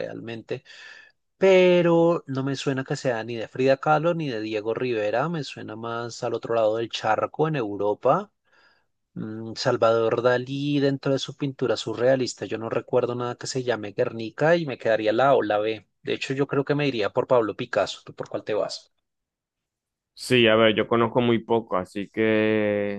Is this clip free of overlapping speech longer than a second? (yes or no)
yes